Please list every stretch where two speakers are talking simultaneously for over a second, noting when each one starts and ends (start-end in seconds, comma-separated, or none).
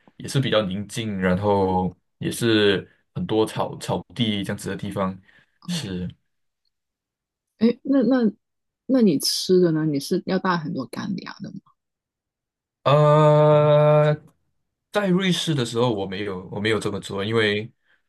none